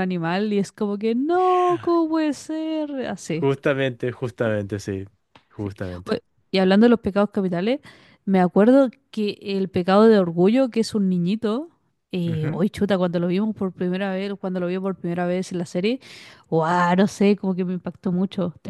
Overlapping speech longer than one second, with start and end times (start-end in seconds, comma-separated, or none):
none